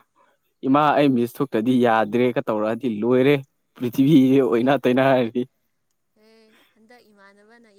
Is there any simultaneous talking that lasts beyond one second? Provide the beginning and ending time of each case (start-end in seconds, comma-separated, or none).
none